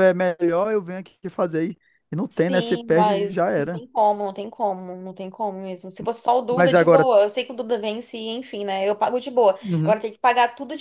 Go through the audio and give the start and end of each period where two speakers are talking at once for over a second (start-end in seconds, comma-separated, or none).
2.3-3.8